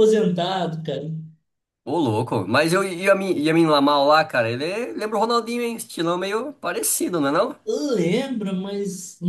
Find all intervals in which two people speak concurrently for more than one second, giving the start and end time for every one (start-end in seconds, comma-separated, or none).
none